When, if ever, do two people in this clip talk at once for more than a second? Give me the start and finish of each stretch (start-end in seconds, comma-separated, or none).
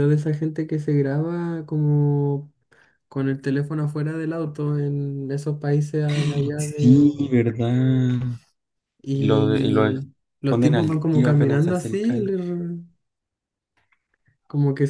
9.1-12.4